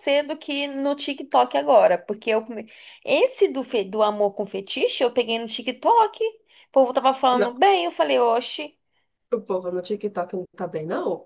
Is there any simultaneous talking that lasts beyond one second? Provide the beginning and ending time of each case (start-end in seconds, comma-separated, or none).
none